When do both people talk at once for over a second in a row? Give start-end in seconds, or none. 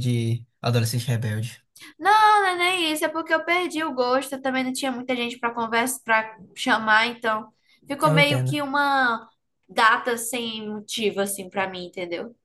none